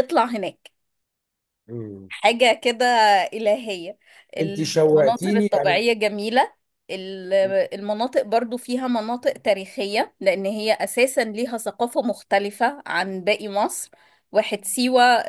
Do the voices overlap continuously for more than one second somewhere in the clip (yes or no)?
yes